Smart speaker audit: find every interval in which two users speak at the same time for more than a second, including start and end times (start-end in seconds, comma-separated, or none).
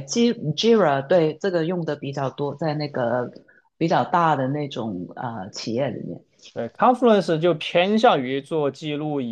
none